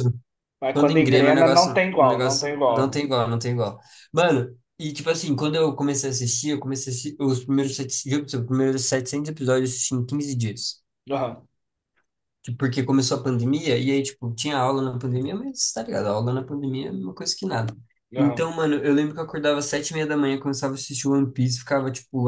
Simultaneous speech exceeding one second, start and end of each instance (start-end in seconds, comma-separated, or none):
0.7-3.0